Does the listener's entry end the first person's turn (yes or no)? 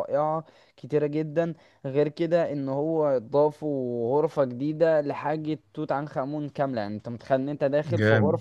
no